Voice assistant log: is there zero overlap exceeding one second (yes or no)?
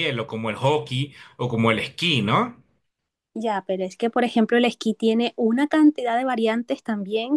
yes